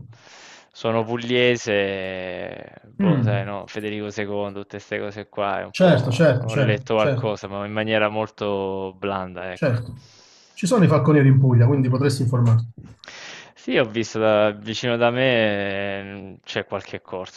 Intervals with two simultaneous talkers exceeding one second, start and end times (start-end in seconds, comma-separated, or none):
5.7-7.4